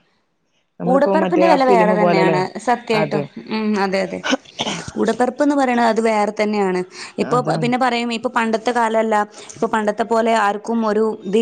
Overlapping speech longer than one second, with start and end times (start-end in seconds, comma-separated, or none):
0.9-2.4